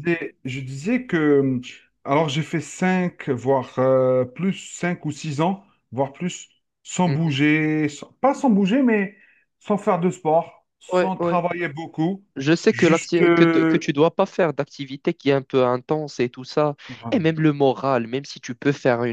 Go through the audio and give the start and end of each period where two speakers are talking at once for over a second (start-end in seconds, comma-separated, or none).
12.7-13.9